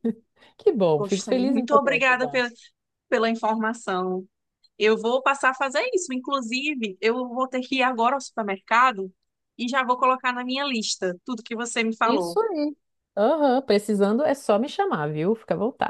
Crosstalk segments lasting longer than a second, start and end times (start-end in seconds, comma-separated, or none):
1.0-2.4